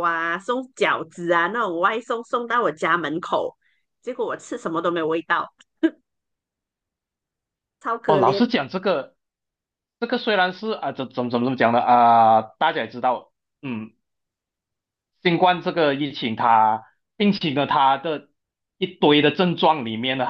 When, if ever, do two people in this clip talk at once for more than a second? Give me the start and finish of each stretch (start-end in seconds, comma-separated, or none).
none